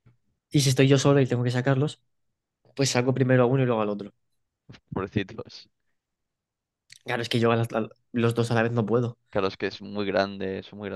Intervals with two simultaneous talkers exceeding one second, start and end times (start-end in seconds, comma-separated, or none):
none